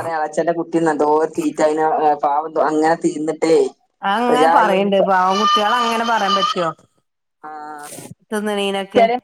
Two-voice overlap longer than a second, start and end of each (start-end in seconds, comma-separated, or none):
none